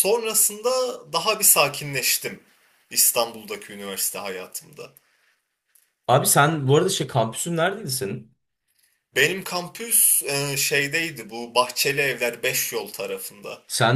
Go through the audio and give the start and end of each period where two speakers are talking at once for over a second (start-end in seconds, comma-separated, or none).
none